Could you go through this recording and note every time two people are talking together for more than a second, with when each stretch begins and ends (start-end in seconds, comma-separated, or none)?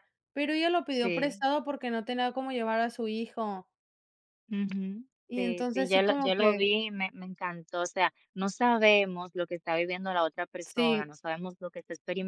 5.3-6.7